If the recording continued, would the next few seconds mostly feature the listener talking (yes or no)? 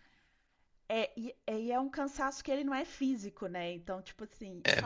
no